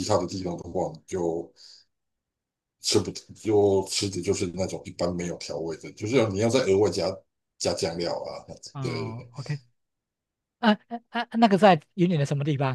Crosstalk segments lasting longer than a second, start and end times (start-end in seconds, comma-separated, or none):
none